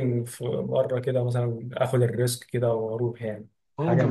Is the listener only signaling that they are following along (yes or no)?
no